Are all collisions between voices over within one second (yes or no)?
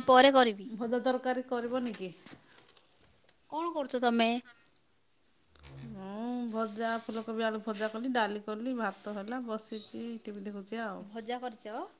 yes